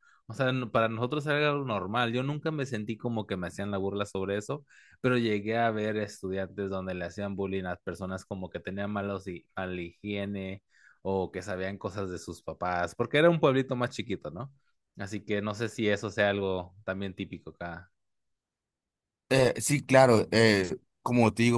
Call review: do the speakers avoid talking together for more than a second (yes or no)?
yes